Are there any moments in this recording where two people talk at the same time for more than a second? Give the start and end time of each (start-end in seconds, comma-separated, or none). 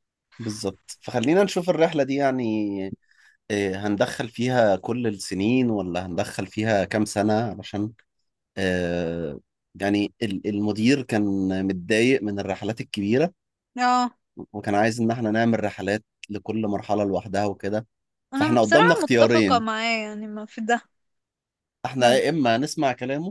18.3-19.6